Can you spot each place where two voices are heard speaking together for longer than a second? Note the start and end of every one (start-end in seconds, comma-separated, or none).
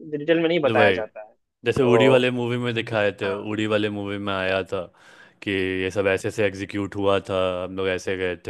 none